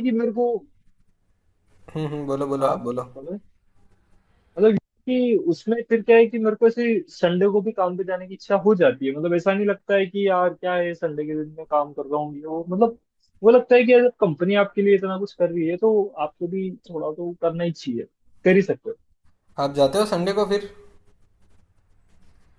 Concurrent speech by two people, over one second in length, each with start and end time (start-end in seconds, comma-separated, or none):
none